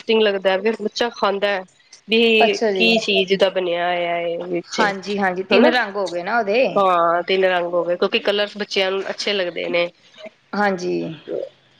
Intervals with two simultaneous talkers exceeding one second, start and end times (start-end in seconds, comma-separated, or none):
none